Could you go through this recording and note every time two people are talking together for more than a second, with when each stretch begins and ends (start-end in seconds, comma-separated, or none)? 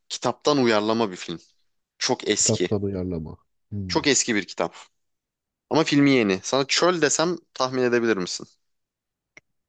none